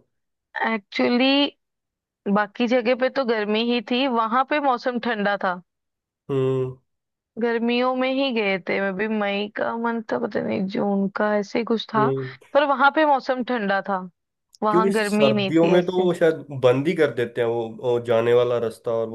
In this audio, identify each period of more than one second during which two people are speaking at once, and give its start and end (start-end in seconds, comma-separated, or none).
14.7-16.1